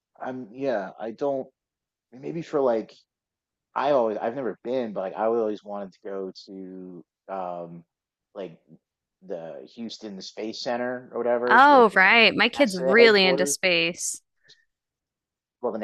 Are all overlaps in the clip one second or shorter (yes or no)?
no